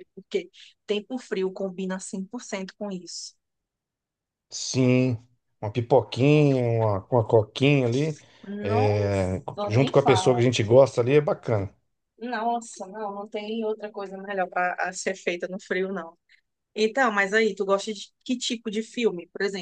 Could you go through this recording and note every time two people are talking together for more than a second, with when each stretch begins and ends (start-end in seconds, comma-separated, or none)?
8.6-10.5